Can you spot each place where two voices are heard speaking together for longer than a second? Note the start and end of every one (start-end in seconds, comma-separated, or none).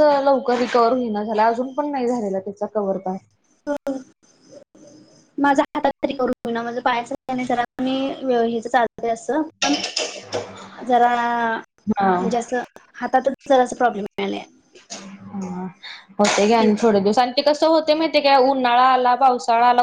none